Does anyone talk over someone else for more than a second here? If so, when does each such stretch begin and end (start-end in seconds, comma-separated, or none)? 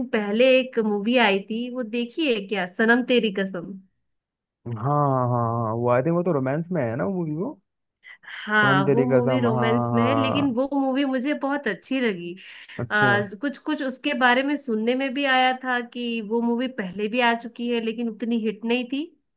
8.6-10.6